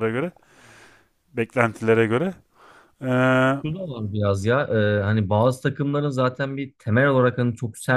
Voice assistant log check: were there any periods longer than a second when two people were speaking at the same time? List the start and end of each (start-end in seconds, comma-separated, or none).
none